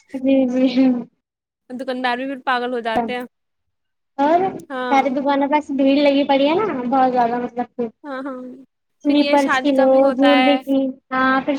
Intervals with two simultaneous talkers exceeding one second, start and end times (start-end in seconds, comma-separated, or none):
9.1-10.6